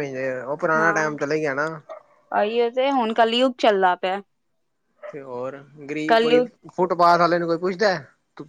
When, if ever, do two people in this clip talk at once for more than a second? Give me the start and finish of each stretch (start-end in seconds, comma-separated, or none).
none